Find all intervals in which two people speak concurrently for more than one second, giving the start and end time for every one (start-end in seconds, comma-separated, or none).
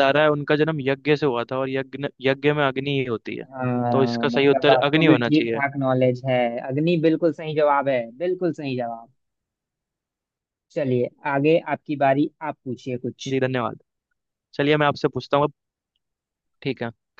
3.9-5.6